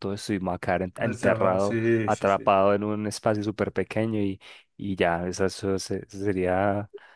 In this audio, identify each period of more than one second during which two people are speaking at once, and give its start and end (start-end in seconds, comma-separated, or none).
1.0-2.5